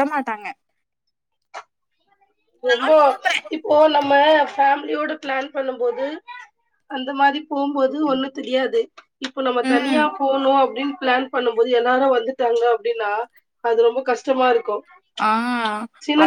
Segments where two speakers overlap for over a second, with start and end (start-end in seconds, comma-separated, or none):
none